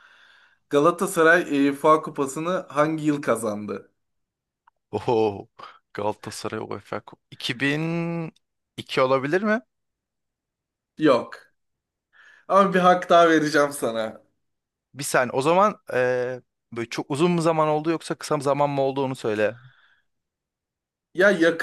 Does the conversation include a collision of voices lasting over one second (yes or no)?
no